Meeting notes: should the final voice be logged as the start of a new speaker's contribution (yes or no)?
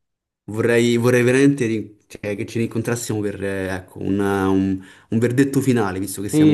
yes